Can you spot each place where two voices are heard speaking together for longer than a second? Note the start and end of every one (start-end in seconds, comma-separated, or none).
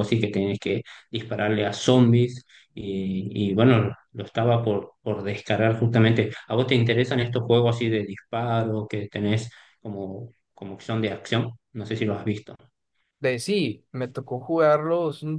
none